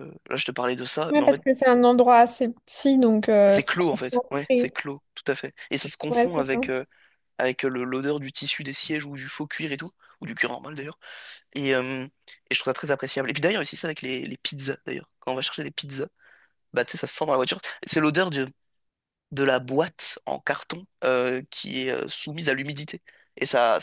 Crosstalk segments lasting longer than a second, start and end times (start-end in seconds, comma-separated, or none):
3.5-4.8